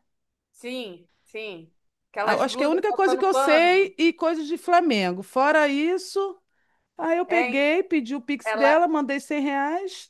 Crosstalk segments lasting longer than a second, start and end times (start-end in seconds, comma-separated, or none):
2.2-4.0